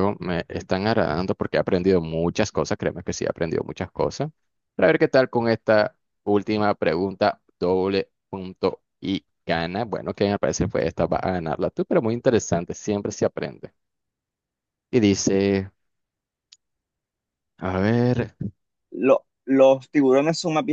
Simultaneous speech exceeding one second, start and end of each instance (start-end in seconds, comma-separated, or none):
none